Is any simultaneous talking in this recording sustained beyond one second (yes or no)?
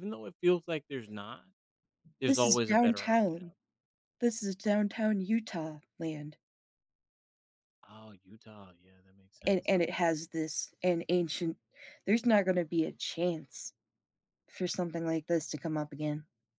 yes